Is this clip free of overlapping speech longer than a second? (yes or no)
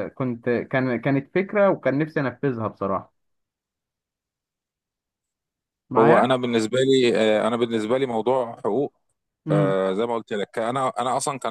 yes